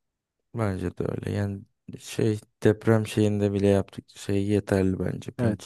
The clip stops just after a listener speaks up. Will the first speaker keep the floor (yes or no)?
no